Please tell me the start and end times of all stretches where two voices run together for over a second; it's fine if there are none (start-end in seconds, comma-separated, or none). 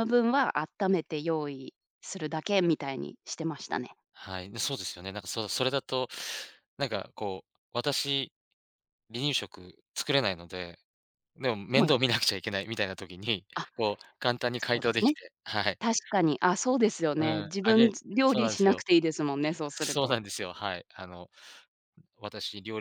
17.2-18.8